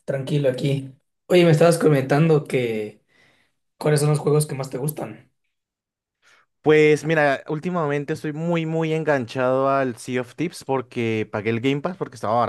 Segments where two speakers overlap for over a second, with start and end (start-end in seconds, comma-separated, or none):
none